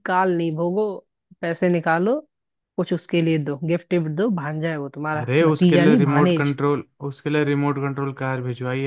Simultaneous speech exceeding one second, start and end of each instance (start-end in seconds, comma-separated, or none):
5.2-6.5